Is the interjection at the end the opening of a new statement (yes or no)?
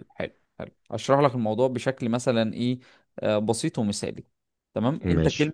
no